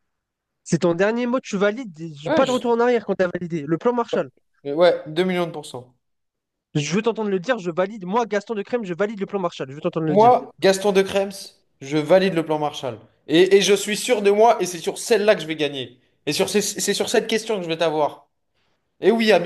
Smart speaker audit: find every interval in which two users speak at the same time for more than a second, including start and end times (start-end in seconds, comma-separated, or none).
none